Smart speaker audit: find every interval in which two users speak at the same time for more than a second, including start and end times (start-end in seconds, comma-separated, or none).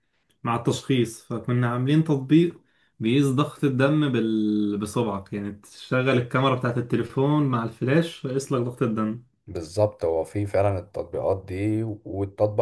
none